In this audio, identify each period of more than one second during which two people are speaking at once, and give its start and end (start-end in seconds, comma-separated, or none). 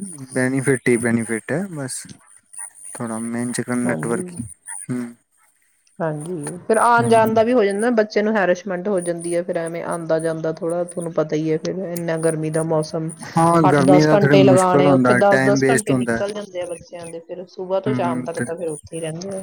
13.7-16.2